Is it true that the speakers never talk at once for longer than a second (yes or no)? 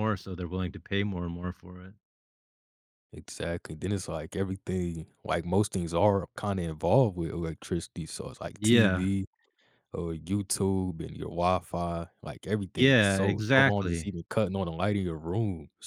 no